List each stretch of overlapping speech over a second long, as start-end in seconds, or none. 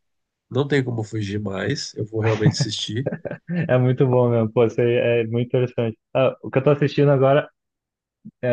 none